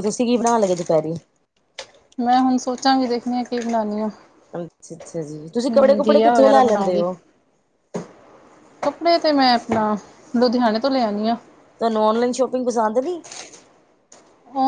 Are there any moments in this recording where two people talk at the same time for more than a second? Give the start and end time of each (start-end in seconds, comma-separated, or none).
5.5-7.0